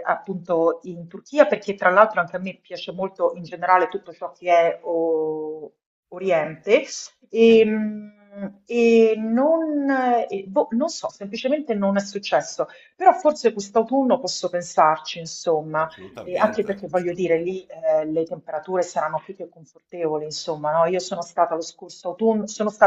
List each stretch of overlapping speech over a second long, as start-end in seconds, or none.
15.8-17.5